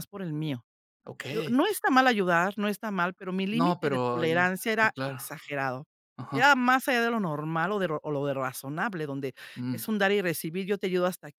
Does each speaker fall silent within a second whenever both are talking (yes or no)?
no